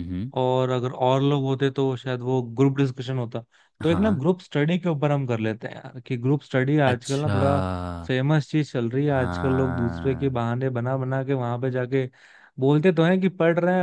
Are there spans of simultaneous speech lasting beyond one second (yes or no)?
yes